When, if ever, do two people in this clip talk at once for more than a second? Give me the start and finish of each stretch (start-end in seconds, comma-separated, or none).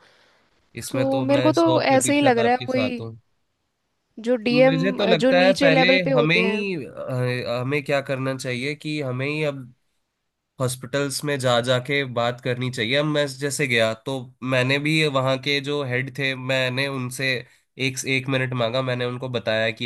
0.9-2.9, 4.5-6.6